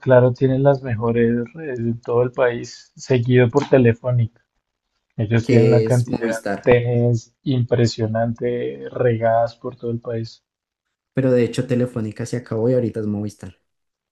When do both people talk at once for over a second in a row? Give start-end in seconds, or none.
5.4-6.8